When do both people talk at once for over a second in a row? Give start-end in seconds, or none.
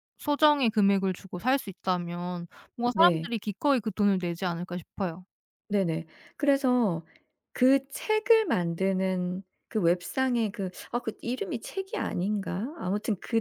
none